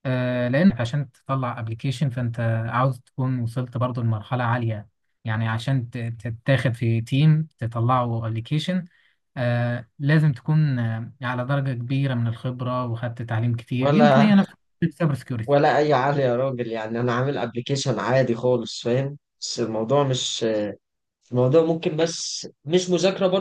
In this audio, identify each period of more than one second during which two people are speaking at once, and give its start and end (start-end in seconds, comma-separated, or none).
none